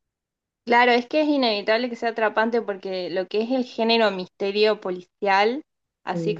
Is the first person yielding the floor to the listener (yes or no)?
no